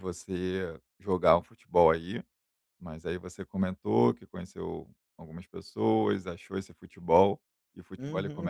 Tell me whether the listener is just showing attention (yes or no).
no